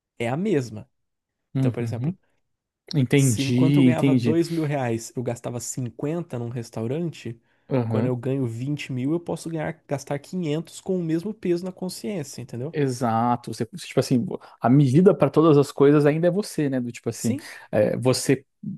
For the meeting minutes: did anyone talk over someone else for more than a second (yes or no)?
yes